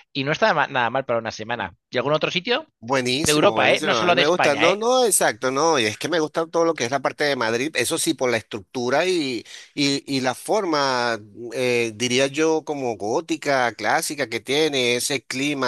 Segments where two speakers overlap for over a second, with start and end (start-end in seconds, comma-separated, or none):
3.2-4.8